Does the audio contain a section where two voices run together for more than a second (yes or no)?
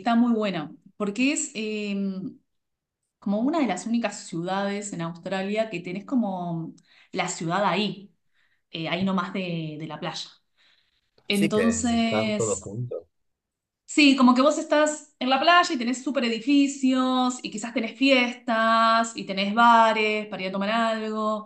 yes